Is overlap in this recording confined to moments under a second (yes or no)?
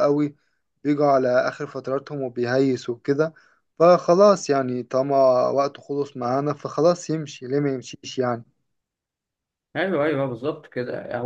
yes